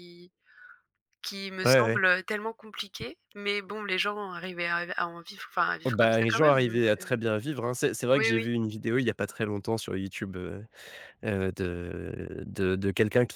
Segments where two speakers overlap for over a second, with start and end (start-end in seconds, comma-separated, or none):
5.8-7.1